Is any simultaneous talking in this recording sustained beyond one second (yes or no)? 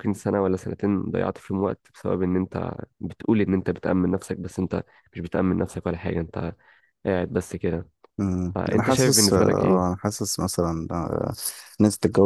yes